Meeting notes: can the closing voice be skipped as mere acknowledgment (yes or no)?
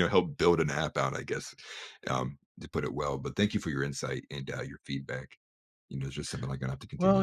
no